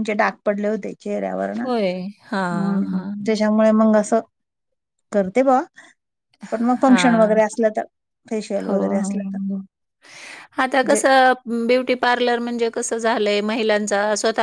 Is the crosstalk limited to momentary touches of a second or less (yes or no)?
yes